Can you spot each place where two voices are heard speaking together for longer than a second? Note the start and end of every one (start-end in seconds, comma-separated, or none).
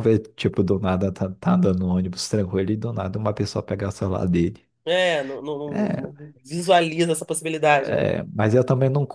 none